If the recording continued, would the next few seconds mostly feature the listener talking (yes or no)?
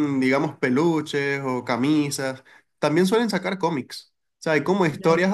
no